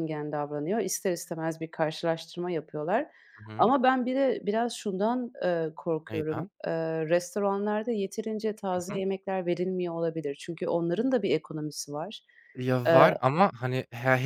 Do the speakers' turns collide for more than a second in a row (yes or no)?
no